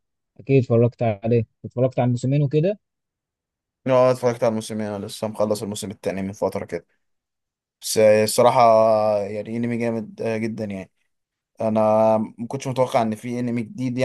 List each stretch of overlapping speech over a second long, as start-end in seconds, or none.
none